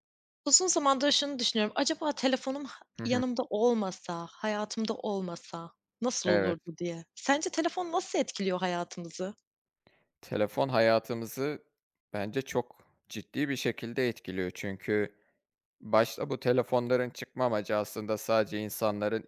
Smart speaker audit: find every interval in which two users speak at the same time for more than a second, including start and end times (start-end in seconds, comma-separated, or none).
none